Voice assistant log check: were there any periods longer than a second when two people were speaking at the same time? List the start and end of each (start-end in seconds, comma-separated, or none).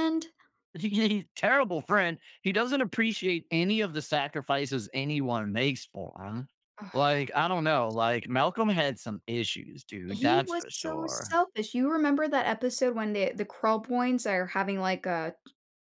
10.1-11.4